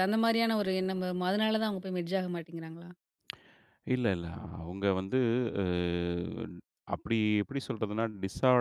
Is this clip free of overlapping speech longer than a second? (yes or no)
yes